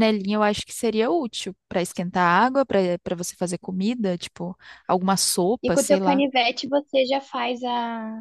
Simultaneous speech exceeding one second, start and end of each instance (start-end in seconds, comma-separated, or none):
none